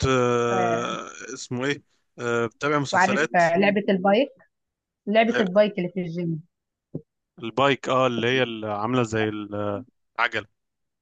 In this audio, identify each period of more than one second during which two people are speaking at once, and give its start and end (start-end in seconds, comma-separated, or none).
none